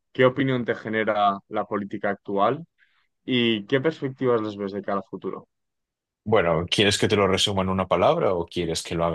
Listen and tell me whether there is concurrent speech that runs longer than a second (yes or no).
no